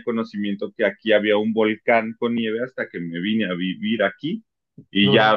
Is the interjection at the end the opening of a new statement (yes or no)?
no